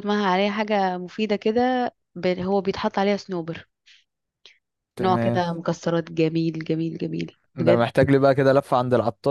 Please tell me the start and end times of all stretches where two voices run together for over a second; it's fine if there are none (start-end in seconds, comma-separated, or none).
none